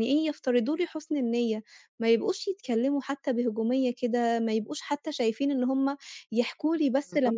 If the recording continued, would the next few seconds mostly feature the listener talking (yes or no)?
no